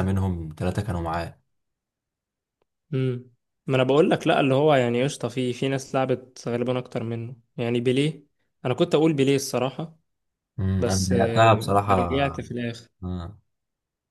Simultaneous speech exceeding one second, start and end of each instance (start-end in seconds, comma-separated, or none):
10.8-12.3